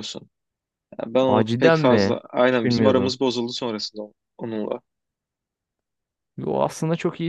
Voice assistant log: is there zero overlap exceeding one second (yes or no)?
no